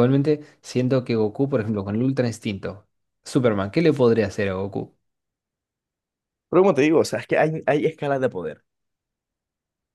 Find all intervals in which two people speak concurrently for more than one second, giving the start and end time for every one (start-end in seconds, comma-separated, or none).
none